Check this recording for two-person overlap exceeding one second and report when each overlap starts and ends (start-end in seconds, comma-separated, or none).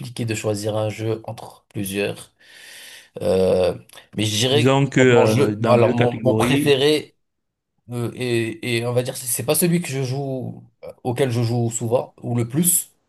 4.5-6.8